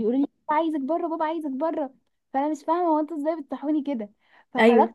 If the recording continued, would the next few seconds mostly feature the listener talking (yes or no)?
no